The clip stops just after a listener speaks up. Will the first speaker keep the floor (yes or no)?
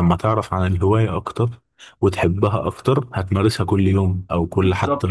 no